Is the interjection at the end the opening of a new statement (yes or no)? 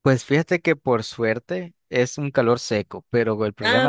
no